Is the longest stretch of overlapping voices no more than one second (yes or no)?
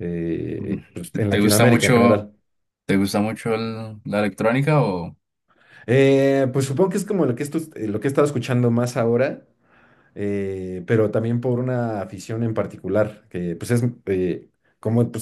no